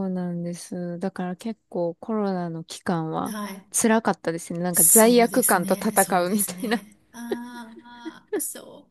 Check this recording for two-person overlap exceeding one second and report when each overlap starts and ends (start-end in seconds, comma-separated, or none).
4.7-6.8